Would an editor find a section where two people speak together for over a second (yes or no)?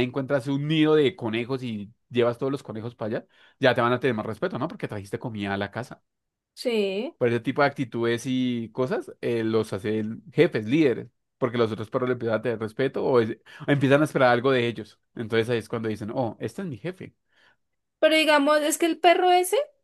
no